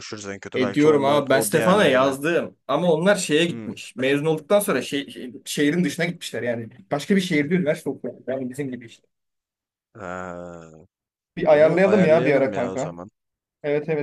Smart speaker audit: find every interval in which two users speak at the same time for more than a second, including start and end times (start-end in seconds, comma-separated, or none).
0.5-2.2, 11.4-13.0